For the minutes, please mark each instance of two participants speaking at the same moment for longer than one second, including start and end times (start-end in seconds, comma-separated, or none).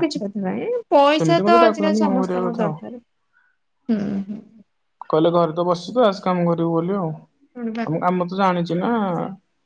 1.2-2.8